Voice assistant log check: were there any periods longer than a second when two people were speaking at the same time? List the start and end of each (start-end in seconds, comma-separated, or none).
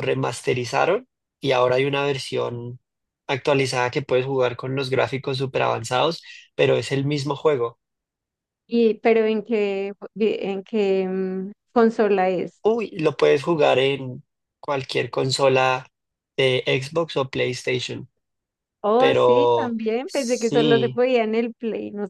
19.0-21.0